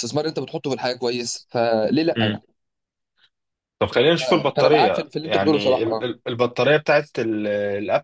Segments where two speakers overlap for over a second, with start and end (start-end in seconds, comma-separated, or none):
4.2-6.1